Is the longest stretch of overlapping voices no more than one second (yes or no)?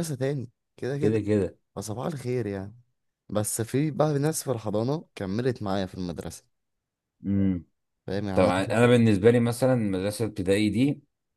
yes